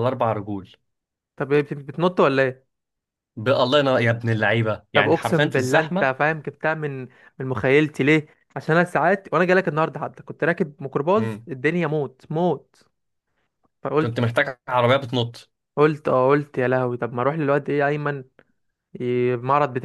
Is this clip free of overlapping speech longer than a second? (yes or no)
no